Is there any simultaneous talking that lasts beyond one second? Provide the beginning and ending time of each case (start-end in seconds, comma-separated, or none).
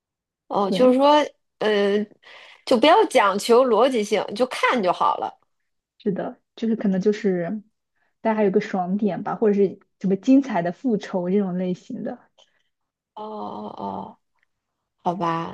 none